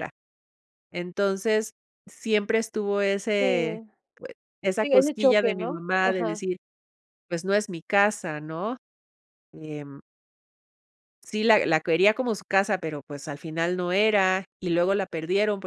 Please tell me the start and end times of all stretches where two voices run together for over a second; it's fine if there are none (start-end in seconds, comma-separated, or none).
4.8-6.4